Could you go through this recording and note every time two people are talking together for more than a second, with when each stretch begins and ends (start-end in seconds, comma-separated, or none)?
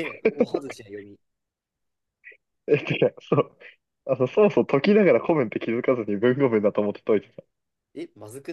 none